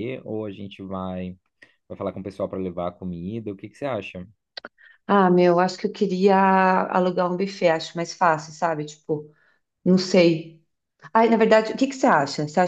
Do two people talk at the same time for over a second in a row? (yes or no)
no